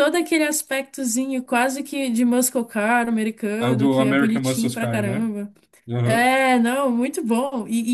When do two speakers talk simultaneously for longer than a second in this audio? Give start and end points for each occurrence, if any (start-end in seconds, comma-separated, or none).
3.6-5.3